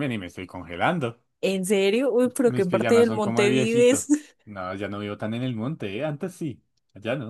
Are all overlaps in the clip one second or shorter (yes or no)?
no